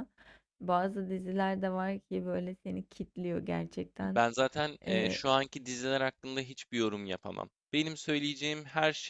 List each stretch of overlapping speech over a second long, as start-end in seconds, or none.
none